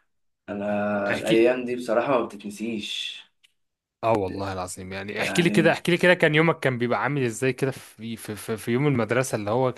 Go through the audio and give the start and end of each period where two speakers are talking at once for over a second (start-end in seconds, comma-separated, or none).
none